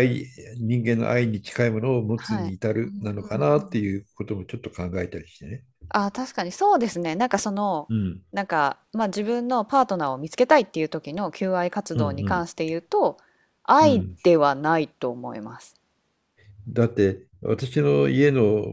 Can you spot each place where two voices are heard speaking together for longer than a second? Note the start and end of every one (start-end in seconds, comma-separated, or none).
2.1-3.8